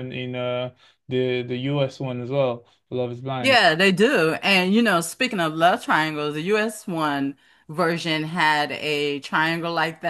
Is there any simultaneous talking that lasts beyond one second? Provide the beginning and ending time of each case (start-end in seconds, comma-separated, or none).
none